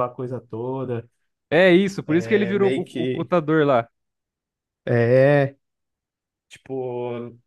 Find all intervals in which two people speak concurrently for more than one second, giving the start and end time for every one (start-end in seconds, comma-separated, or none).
2.0-3.3